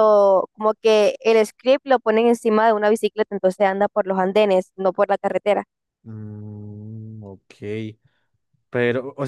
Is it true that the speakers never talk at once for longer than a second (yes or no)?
yes